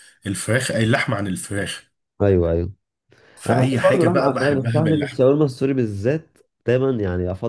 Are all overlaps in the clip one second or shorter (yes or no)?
no